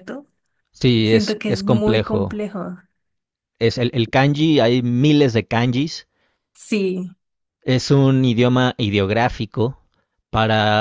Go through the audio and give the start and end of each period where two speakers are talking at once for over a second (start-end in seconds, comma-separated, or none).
1.0-2.4